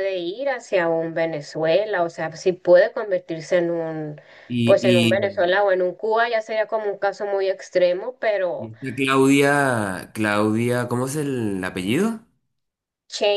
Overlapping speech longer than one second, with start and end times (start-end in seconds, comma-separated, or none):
none